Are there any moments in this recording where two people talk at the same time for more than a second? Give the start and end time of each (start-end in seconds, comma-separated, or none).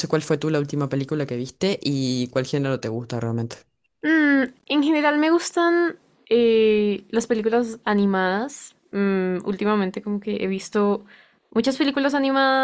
none